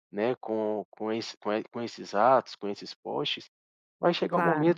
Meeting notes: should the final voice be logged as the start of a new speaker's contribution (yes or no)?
no